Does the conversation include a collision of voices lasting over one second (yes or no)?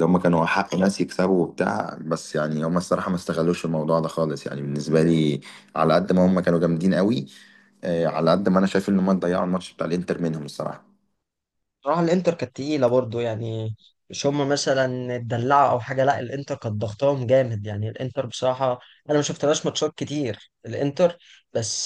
no